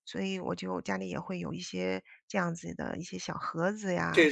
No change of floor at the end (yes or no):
no